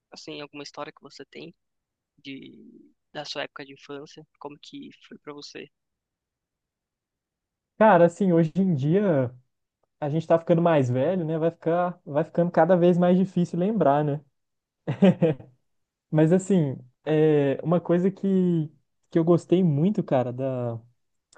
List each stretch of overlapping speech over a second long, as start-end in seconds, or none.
none